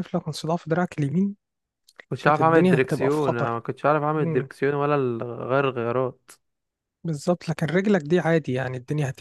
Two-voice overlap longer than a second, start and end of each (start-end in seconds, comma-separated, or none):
2.2-3.6